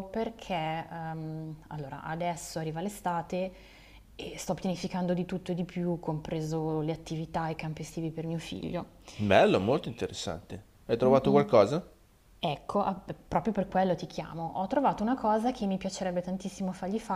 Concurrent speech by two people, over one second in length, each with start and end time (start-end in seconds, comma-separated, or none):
none